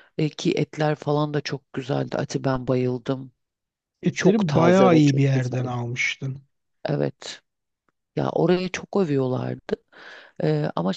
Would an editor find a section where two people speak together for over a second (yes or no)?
yes